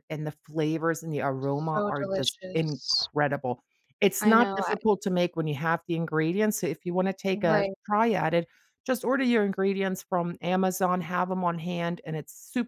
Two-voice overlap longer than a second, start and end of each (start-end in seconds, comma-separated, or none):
1.4-3.1